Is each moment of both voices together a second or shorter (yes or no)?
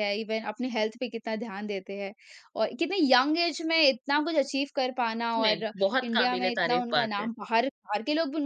no